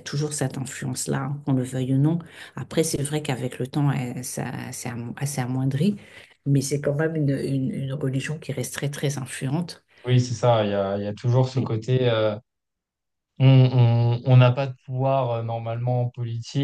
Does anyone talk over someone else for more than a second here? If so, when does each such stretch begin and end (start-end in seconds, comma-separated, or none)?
none